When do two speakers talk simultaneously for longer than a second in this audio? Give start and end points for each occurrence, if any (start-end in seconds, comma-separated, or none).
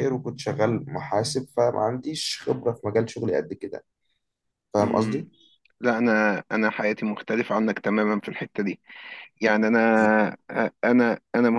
none